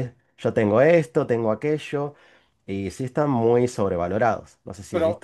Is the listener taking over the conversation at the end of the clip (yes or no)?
yes